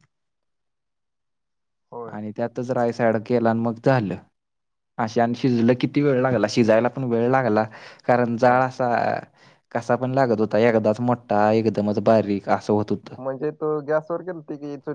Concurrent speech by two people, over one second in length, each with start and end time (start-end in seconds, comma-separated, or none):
none